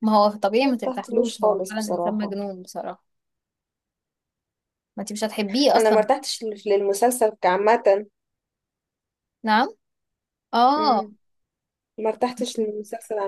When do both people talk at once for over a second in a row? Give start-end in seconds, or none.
0.6-2.4